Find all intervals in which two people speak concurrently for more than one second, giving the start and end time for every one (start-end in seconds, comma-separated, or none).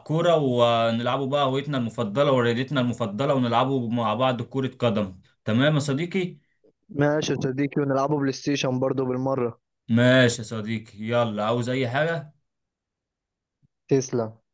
none